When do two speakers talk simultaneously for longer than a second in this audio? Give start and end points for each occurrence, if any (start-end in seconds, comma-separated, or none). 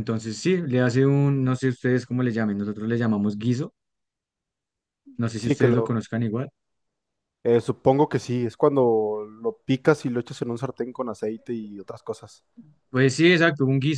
none